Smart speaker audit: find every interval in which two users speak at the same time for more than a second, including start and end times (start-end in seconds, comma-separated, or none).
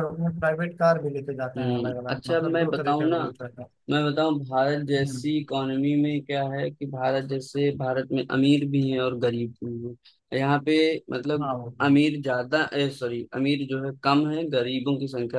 1.6-3.2